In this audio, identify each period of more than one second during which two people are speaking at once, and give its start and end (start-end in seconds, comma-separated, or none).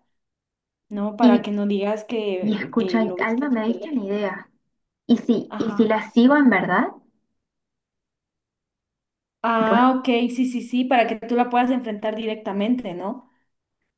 2.4-4.0